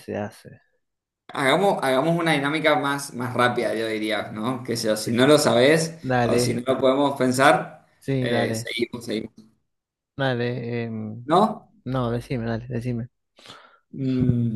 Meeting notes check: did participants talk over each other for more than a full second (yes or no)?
no